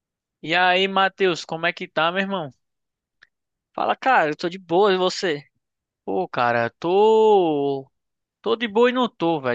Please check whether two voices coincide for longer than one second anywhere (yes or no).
no